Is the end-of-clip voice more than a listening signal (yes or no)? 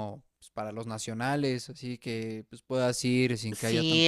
yes